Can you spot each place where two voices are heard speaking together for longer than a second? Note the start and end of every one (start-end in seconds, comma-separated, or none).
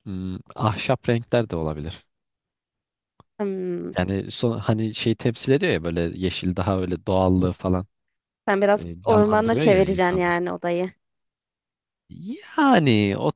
8.8-10.2